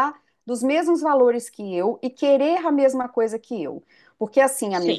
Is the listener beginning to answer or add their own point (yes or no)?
no